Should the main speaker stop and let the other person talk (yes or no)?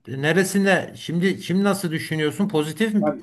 yes